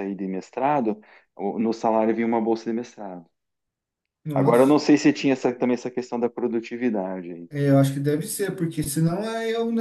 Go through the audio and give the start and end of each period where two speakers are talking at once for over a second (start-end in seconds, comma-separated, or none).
none